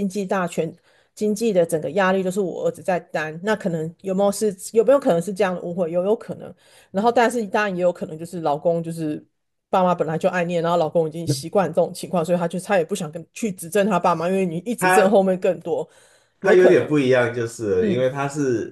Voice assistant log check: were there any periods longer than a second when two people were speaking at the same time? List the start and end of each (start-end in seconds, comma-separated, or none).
none